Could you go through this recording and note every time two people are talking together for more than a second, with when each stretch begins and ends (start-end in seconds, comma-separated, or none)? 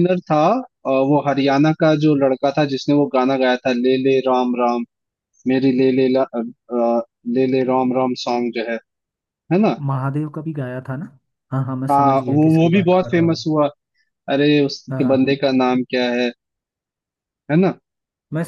11.9-13.4